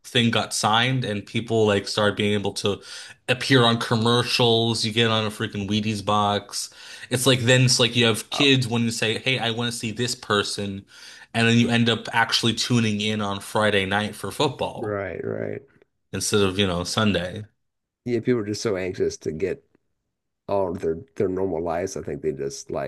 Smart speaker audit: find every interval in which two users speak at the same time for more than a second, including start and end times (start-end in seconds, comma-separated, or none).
none